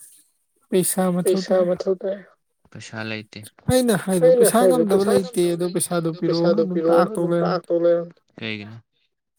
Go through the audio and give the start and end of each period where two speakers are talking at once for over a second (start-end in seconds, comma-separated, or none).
4.2-7.7